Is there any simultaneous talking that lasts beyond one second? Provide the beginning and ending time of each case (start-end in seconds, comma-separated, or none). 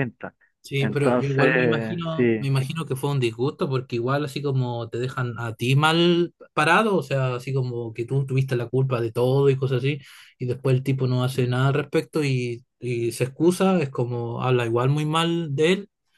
0.8-2.5